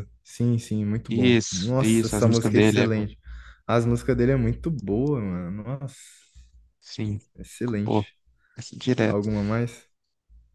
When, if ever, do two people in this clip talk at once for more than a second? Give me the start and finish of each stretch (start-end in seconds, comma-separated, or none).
1.1-3.0